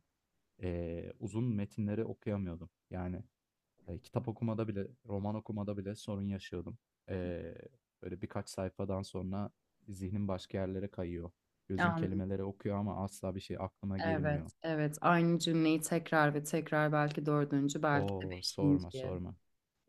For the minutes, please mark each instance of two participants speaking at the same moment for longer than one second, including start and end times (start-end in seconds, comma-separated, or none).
17.9-19.1